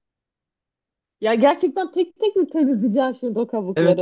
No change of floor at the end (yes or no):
no